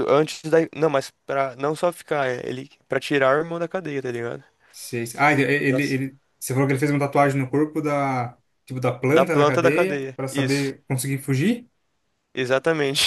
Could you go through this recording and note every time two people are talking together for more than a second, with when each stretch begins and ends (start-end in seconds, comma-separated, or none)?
9.1-10.7